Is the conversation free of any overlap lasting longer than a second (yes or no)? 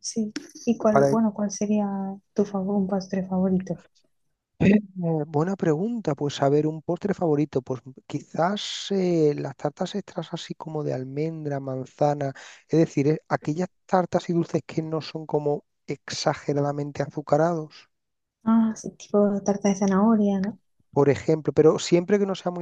yes